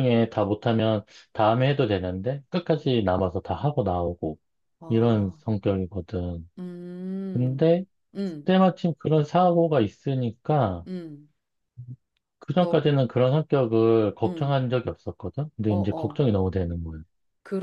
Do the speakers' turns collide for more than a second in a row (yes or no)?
no